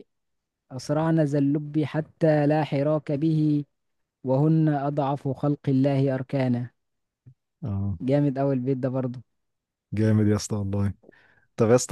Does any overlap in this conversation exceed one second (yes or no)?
no